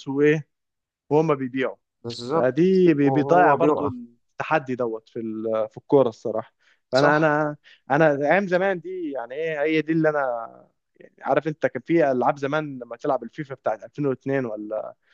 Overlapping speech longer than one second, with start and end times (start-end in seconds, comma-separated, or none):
2.3-3.9